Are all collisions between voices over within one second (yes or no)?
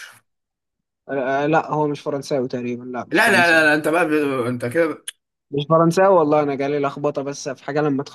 yes